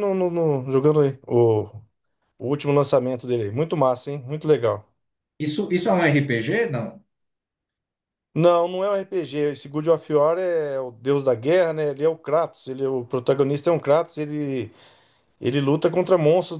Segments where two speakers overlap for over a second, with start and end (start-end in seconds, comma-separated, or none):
none